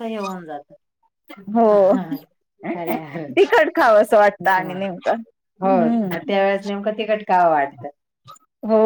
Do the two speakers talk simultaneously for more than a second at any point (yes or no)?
no